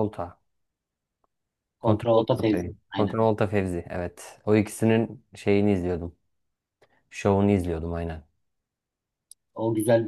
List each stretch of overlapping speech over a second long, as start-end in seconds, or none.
1.8-3.2